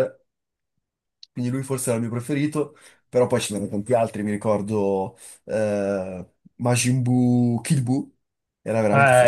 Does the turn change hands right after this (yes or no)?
yes